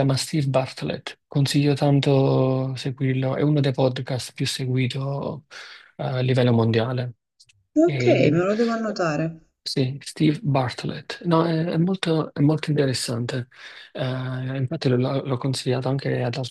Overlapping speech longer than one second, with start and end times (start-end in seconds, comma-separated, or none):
none